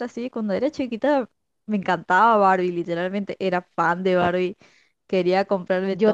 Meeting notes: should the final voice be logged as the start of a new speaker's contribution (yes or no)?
no